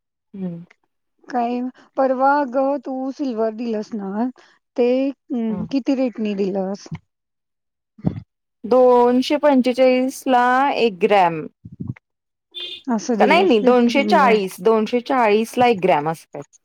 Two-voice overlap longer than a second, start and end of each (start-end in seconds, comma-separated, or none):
13.2-14.5